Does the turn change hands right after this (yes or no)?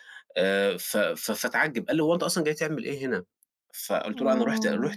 no